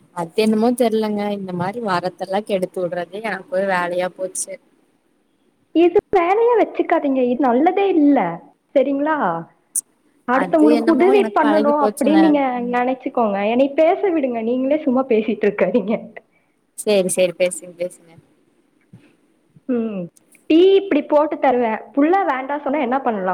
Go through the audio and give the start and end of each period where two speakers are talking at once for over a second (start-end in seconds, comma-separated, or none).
10.4-12.2